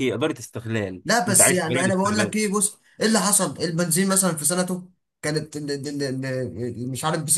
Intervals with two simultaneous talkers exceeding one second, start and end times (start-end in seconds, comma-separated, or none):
1.0-2.4